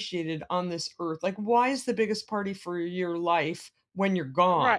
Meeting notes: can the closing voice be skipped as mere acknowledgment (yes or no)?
no